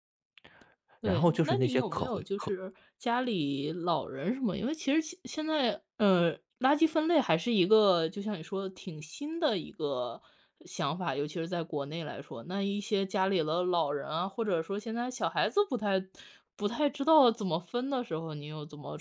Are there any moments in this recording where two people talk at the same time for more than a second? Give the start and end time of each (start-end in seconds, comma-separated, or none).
1.0-2.5